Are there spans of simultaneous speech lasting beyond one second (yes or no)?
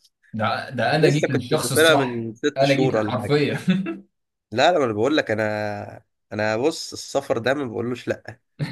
yes